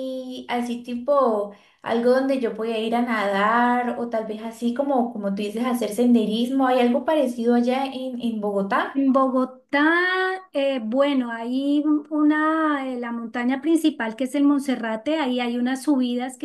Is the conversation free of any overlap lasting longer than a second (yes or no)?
yes